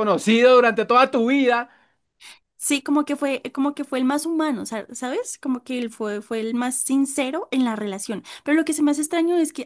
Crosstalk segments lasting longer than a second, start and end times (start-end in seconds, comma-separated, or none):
none